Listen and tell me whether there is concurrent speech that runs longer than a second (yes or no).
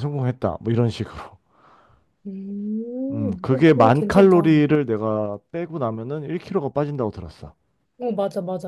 yes